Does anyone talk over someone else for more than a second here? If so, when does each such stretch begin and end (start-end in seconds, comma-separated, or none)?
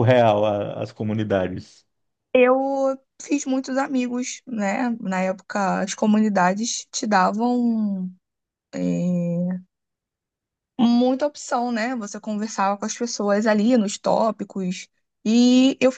none